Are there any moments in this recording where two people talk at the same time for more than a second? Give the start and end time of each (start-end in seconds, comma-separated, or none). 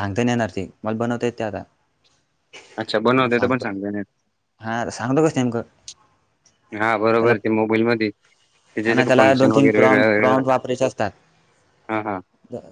8.9-10.4